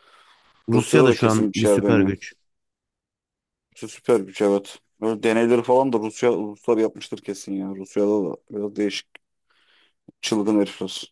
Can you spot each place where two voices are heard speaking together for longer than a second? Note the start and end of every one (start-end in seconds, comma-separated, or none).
0.8-2.1